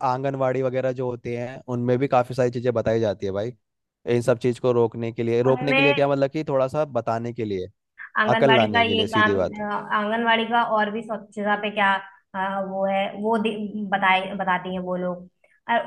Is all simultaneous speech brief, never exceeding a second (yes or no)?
no